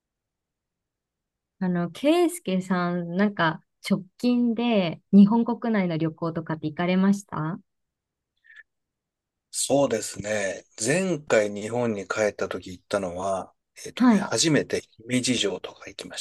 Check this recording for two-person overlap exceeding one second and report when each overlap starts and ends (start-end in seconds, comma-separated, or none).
none